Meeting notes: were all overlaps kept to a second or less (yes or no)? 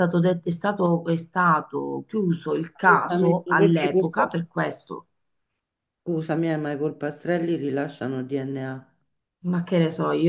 no